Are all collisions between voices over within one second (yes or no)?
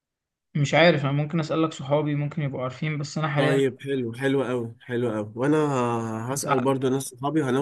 yes